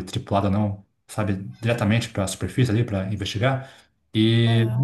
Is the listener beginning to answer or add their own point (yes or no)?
no